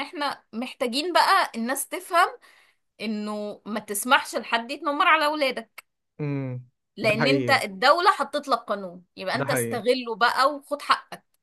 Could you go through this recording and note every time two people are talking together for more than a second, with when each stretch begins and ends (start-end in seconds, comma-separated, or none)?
none